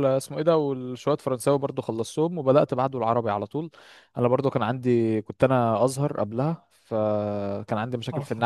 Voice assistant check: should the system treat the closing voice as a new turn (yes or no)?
no